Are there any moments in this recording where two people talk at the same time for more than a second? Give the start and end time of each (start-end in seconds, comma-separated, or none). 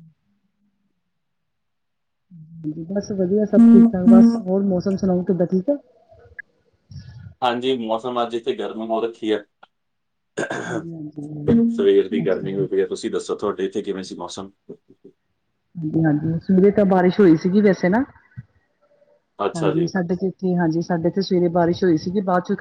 none